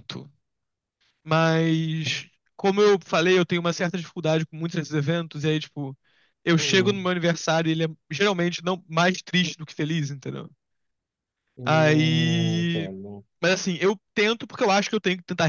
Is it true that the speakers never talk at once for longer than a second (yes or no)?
no